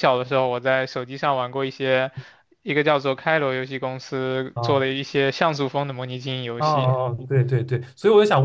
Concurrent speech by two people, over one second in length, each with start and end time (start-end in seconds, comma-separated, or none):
none